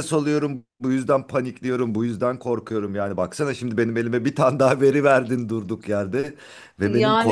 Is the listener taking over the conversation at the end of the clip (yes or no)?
no